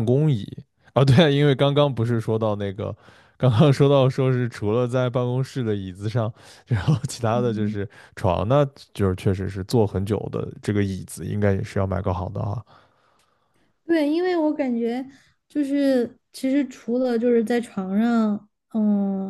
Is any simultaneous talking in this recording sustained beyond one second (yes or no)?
no